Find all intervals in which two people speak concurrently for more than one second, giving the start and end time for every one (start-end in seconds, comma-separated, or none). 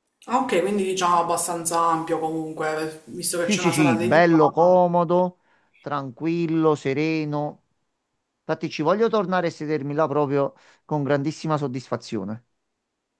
3.4-4.8